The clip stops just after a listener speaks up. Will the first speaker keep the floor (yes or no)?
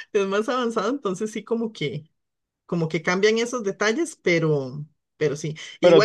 no